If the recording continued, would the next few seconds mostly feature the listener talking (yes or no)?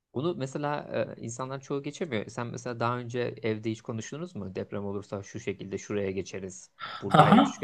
yes